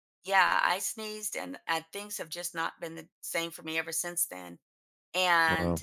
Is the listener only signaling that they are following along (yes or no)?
yes